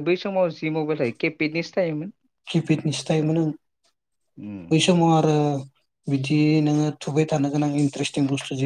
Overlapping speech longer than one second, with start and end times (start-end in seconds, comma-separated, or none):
none